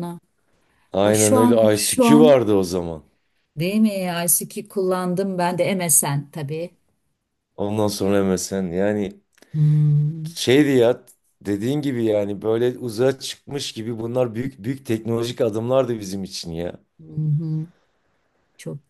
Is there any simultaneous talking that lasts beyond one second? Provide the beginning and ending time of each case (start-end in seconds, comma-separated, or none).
1.0-2.4